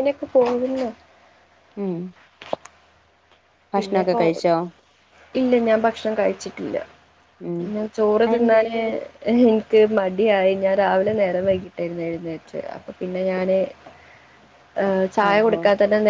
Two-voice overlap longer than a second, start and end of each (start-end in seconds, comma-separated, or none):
none